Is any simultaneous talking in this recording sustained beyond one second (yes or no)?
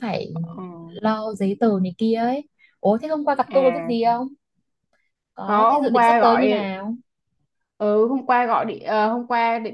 yes